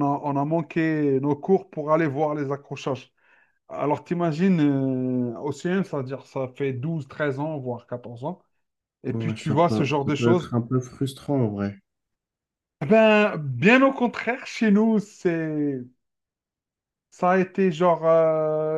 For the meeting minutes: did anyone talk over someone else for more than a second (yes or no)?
yes